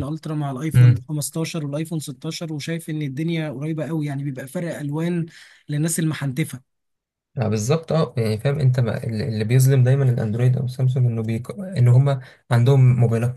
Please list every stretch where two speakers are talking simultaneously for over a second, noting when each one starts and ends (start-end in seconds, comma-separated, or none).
none